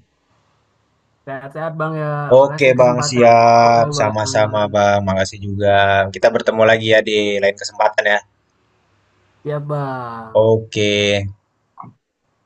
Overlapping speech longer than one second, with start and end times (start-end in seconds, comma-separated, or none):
2.4-4.7